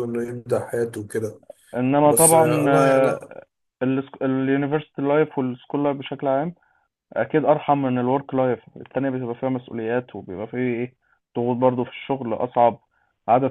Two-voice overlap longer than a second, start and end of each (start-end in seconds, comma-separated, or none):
2.0-3.3